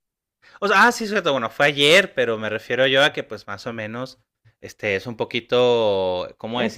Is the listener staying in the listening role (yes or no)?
yes